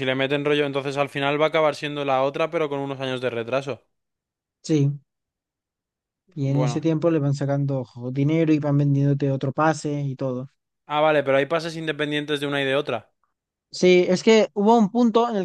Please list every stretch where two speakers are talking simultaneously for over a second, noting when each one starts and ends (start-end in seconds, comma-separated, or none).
none